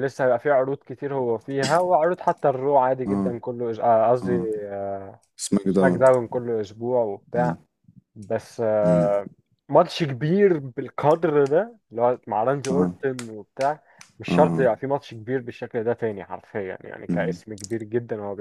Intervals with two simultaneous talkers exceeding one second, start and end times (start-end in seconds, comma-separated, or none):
none